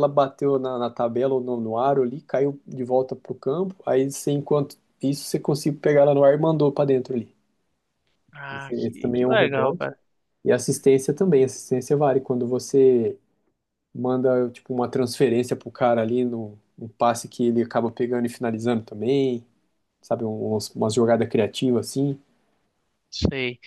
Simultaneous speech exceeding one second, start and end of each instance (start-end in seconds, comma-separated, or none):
8.5-9.9